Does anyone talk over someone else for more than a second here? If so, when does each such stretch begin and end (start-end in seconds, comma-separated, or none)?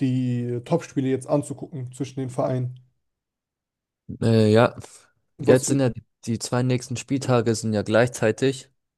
none